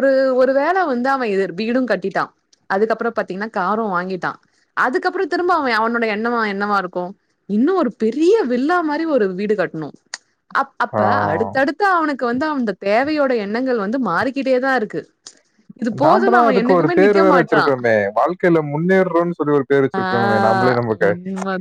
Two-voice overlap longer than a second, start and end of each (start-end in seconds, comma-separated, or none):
16.0-17.7